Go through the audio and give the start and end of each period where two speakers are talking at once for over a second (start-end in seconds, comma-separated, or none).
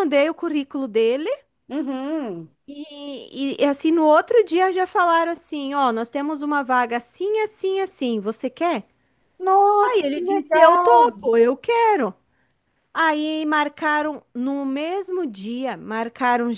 9.8-11.1